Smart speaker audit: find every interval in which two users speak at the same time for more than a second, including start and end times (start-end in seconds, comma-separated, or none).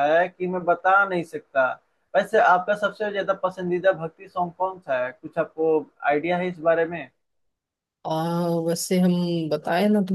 none